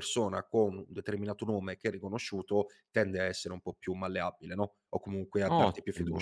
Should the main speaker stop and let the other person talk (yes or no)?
yes